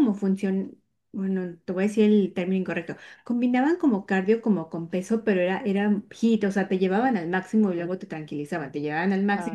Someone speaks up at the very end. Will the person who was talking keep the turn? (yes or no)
yes